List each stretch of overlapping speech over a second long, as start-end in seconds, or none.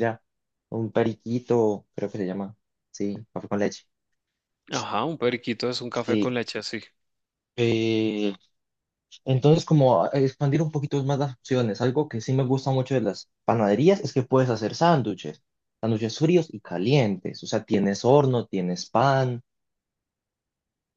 none